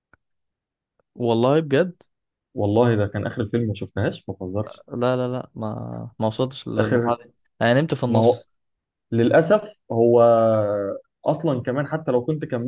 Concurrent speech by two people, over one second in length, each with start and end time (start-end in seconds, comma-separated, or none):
none